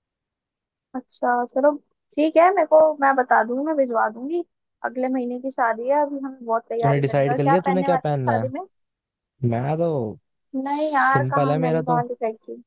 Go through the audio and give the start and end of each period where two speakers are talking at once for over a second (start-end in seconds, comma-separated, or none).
6.8-8.5, 10.7-12.0